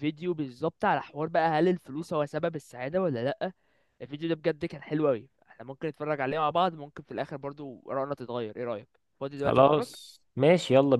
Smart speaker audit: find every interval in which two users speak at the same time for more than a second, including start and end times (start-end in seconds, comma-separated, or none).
none